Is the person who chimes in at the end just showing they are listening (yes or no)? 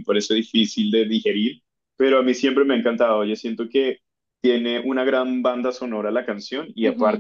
yes